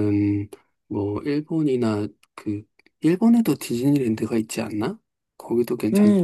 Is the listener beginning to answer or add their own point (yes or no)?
yes